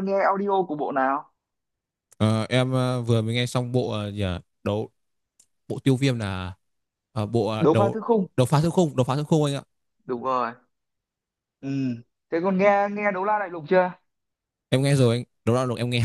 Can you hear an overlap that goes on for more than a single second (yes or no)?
no